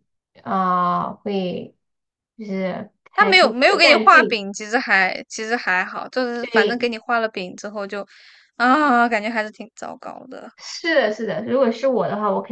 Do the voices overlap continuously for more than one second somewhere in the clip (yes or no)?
yes